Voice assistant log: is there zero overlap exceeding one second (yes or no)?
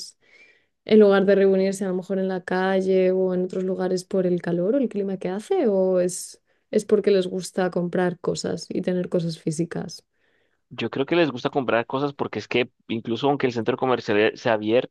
yes